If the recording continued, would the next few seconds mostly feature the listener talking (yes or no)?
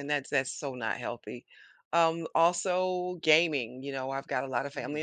yes